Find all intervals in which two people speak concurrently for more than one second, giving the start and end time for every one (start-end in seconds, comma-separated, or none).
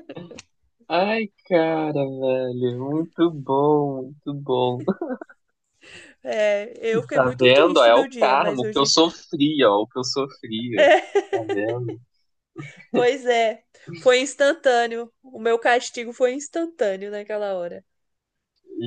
7.1-8.9